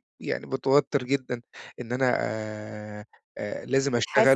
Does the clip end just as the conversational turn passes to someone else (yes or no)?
no